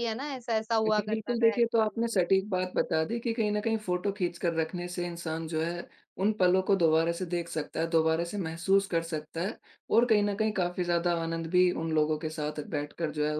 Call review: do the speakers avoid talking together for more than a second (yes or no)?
no